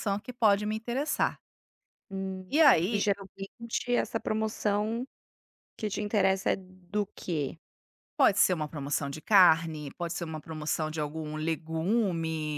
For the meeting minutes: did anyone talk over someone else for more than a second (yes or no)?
no